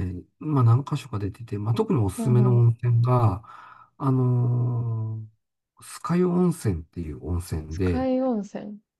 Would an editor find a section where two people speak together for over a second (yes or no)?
no